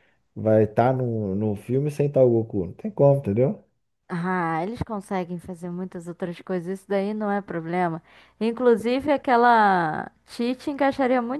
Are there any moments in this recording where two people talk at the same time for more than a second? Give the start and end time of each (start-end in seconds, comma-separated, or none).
none